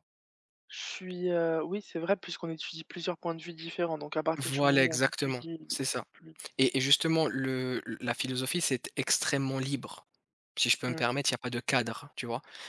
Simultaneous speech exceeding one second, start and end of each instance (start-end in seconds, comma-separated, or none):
4.4-6.0